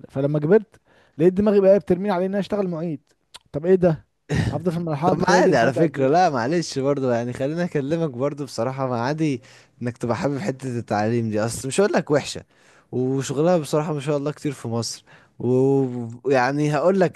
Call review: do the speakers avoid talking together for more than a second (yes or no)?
no